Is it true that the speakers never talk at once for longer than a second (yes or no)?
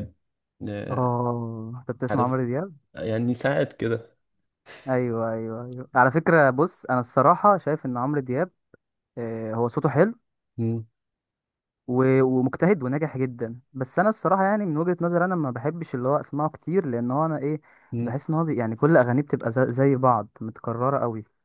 yes